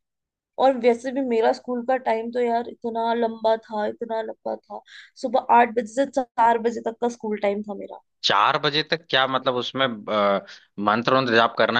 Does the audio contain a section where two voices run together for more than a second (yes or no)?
no